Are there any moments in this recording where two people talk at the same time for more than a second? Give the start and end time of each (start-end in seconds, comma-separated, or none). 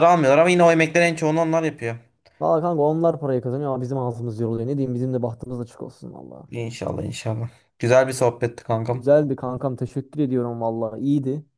none